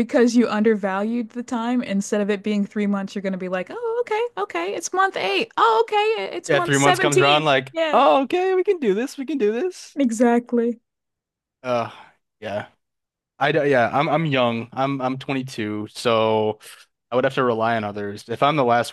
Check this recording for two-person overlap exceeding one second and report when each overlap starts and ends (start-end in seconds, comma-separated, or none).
6.5-8.0